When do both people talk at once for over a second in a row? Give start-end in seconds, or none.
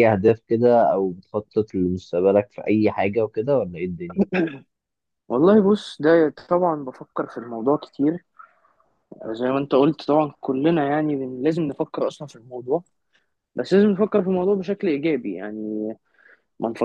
none